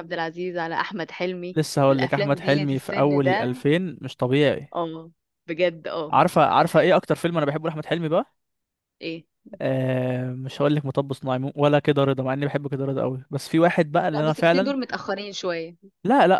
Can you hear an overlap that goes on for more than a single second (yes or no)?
yes